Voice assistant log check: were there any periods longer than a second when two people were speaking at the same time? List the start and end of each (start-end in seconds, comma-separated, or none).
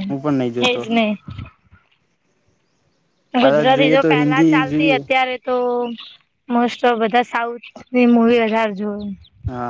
3.4-5.0